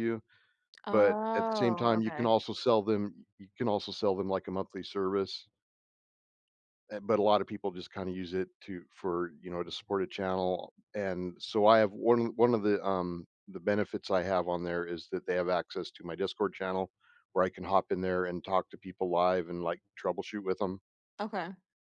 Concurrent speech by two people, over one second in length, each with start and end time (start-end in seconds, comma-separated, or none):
0.9-2.3